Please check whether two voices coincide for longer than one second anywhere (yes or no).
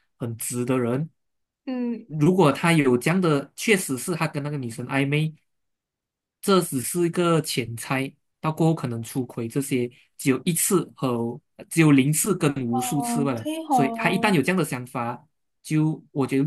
yes